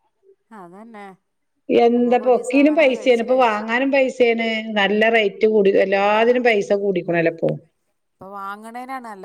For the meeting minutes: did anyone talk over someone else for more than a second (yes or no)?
yes